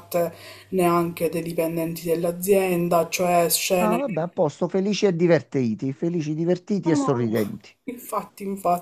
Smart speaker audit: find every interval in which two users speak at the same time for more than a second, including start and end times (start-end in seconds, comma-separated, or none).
none